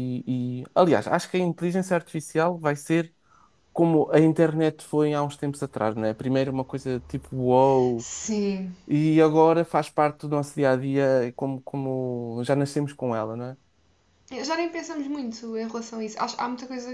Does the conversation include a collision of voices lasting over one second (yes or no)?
no